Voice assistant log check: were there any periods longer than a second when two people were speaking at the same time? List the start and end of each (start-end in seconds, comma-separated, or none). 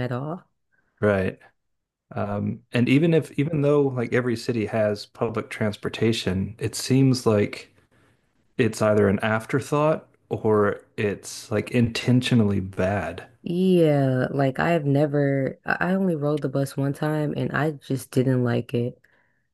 none